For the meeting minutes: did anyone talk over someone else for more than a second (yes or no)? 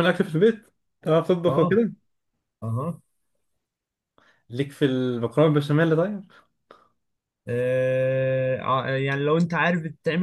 no